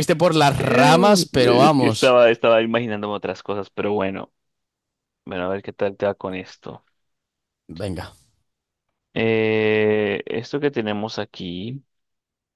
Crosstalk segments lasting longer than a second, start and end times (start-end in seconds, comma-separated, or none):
0.6-2.2